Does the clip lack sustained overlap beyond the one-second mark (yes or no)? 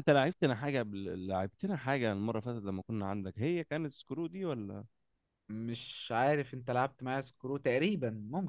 yes